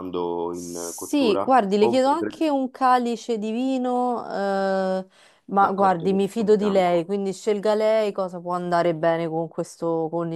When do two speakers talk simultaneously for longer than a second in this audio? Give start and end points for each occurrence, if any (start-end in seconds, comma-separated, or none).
0.5-2.4, 5.6-7.1